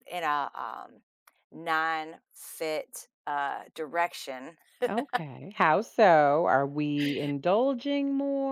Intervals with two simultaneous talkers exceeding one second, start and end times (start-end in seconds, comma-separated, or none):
none